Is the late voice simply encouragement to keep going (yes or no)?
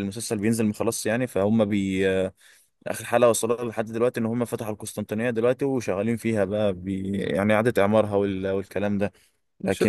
no